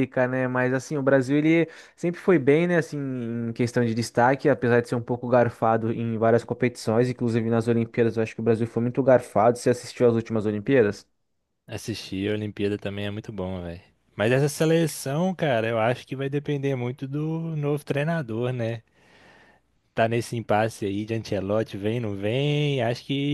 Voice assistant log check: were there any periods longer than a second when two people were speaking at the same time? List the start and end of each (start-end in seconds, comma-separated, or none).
none